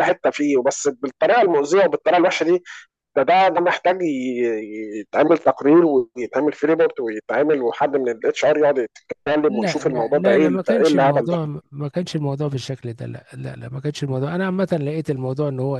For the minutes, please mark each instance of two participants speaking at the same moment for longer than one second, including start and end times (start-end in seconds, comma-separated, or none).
9.5-11.4